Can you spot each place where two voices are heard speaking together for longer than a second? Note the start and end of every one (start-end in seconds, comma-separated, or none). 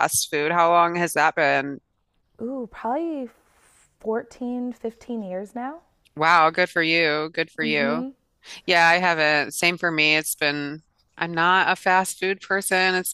none